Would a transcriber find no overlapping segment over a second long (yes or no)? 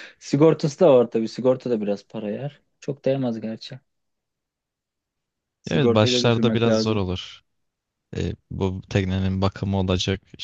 no